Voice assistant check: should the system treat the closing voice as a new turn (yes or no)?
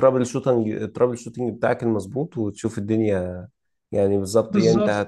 no